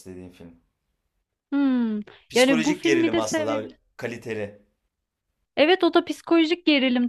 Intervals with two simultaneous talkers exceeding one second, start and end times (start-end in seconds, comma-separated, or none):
2.3-3.8